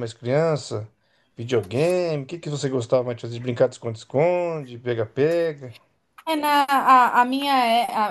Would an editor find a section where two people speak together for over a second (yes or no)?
no